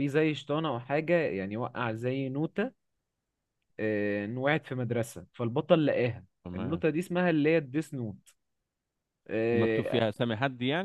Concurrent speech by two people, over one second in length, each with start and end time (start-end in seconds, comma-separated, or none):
none